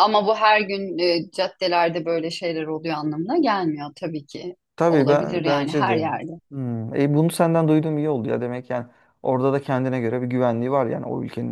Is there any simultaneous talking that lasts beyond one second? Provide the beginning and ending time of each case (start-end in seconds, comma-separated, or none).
4.8-6.1